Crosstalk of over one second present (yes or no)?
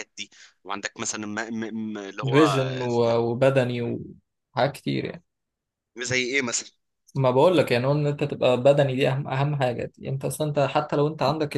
no